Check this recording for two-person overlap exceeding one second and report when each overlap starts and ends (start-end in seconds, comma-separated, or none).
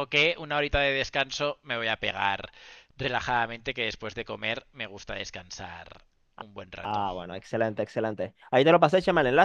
none